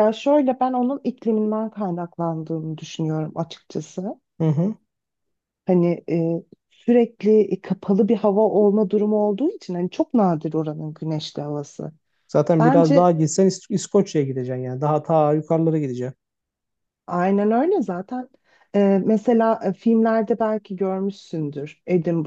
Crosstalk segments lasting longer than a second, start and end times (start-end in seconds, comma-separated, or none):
none